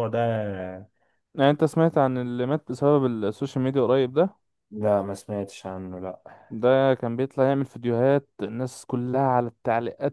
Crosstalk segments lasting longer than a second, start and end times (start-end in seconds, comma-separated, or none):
none